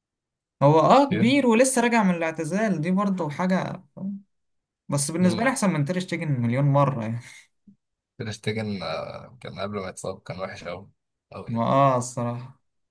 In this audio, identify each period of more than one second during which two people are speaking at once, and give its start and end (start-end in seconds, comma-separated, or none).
none